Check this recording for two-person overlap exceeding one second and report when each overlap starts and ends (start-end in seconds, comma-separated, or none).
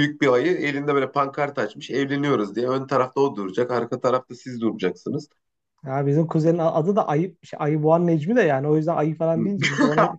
none